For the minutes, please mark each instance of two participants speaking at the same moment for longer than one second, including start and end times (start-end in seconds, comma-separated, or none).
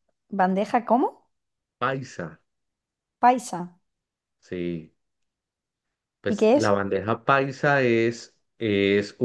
none